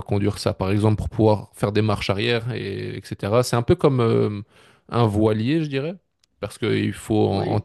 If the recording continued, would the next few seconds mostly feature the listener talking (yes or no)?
no